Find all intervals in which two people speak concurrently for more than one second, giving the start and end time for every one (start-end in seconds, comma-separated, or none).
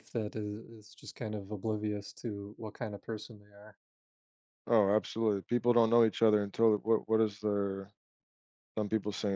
none